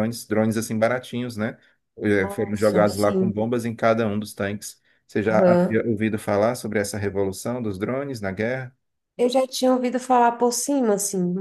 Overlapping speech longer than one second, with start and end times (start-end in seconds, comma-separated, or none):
2.2-3.4